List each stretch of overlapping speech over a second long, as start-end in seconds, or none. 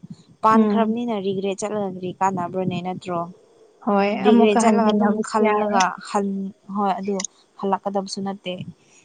4.2-5.7